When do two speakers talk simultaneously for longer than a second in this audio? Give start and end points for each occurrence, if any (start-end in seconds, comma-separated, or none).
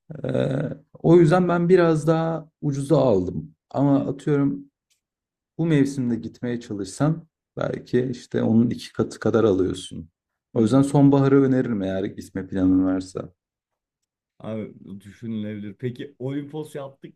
none